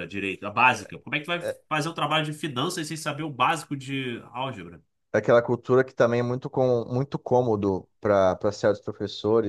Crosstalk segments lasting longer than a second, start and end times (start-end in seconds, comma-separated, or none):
none